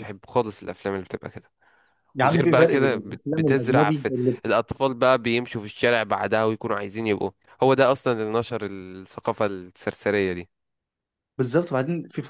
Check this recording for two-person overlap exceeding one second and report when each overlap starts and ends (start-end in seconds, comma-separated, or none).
2.2-4.4